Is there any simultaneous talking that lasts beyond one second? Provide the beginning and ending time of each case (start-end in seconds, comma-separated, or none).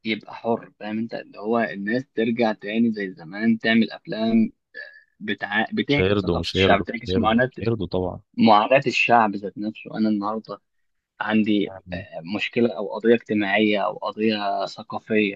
5.9-7.5